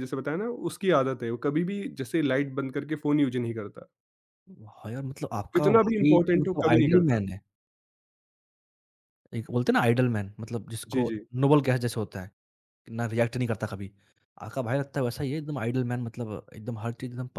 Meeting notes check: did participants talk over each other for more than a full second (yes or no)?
yes